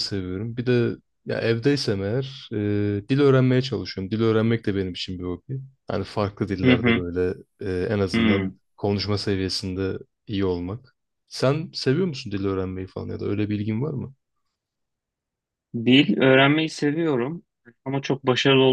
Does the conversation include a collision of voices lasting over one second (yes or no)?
no